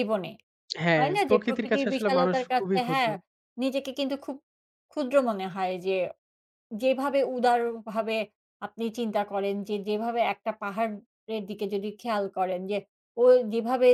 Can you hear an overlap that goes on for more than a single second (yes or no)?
yes